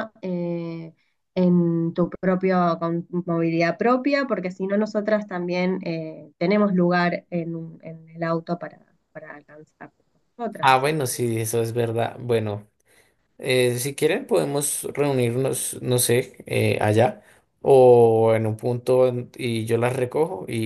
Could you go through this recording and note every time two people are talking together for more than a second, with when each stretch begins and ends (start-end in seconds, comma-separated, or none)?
none